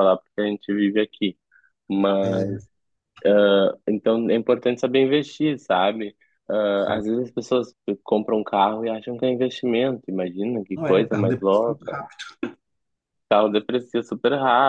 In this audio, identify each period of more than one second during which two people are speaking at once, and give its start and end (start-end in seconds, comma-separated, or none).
10.7-12.0